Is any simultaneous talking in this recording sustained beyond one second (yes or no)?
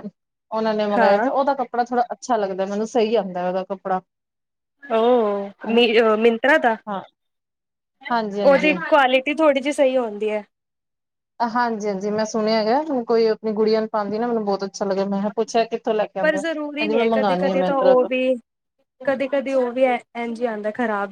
yes